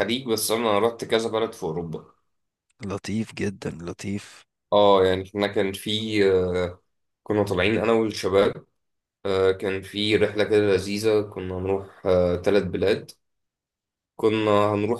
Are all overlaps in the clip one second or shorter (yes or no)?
yes